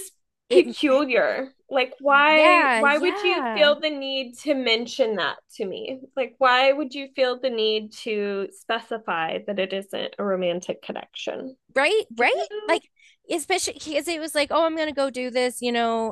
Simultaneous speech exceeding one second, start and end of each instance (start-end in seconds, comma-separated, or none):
2.3-3.7